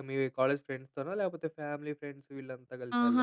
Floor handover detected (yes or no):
yes